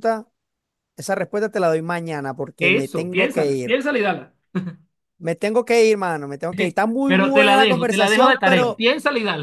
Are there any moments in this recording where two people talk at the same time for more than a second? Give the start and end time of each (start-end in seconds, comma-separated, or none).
2.6-3.8, 7.0-8.8